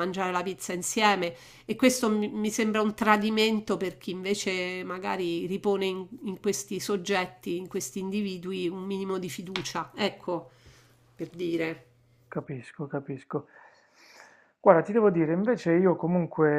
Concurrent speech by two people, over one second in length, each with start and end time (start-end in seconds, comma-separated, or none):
none